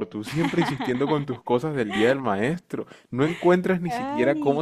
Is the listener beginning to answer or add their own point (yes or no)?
no